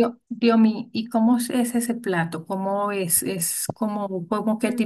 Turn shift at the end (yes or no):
no